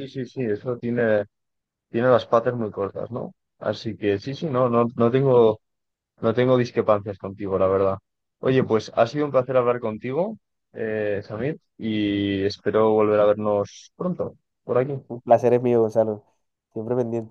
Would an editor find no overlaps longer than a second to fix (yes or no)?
yes